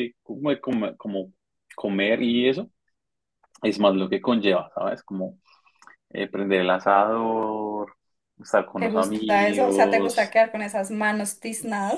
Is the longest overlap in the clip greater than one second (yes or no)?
yes